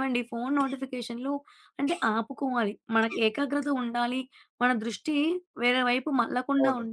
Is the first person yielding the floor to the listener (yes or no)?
no